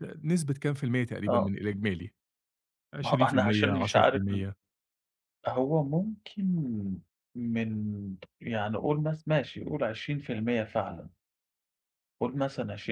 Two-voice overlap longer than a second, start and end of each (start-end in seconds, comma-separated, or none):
3.0-4.4